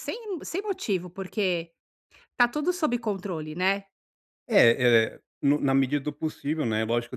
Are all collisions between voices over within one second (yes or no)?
yes